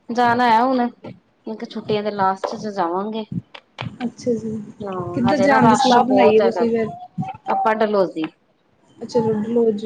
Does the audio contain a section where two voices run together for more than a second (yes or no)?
yes